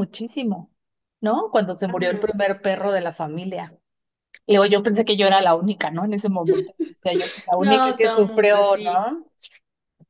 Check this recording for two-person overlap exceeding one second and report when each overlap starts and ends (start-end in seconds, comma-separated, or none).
7.6-9.1